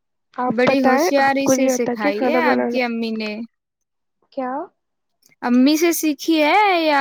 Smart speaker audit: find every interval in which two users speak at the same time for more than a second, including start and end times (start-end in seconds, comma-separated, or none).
0.6-2.9